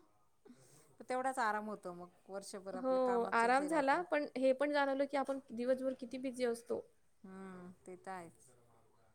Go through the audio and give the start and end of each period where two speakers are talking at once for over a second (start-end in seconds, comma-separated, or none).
2.8-4.0